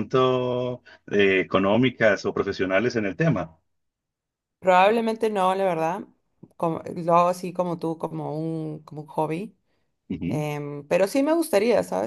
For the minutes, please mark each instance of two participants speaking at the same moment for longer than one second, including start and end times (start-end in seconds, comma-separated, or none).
none